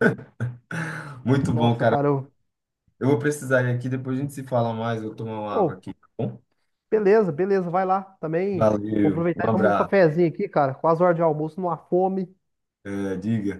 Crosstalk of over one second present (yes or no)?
yes